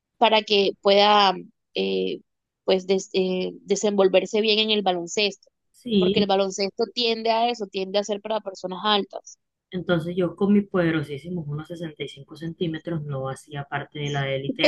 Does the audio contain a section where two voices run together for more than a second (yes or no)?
no